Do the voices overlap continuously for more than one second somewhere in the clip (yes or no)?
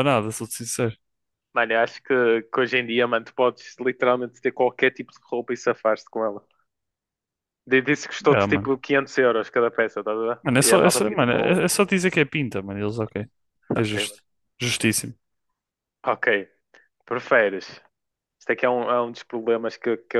yes